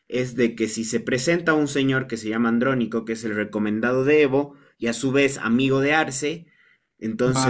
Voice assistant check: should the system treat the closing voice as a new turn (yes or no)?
no